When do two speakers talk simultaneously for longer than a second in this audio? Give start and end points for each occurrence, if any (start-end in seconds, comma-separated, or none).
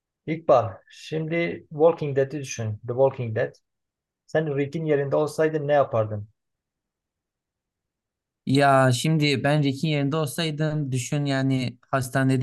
none